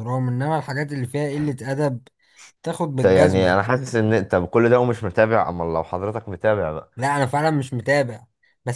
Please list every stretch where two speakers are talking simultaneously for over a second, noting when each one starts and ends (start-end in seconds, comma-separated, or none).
none